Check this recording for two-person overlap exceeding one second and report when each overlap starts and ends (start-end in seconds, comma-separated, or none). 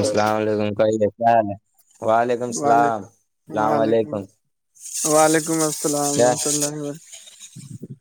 2.6-4.1